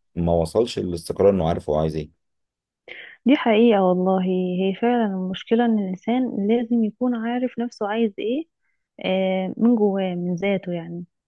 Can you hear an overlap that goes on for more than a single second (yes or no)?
no